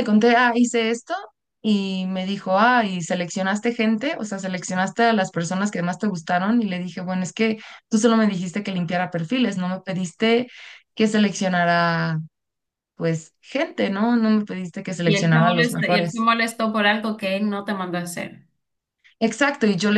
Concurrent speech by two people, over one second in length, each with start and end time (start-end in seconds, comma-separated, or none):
15.0-16.2